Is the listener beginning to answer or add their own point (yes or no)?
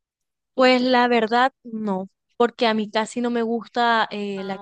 no